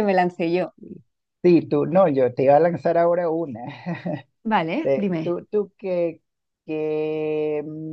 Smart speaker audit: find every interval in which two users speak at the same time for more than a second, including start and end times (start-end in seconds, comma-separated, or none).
none